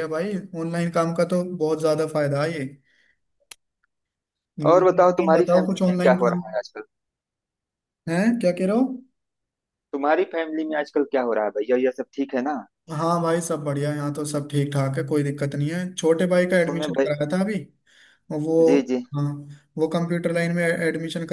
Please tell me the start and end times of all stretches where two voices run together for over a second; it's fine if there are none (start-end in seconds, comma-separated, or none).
4.7-6.4